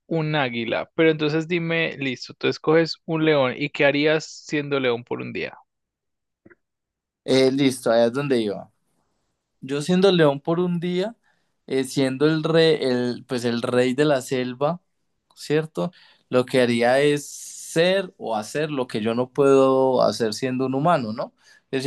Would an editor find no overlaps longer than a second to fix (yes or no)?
yes